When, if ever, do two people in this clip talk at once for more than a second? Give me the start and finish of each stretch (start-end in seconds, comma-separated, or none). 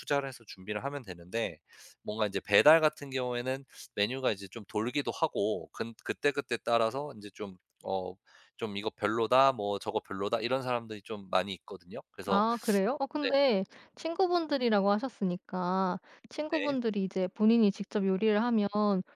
none